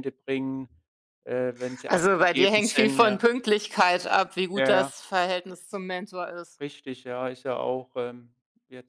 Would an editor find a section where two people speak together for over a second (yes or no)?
yes